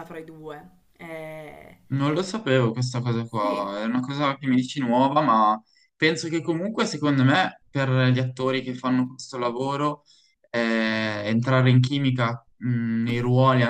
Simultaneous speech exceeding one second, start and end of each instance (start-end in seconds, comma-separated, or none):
none